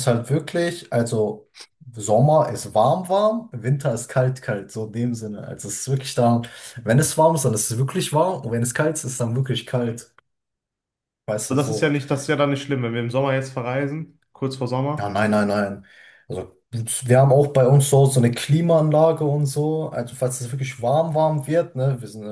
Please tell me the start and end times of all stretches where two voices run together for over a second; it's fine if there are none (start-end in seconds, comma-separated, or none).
none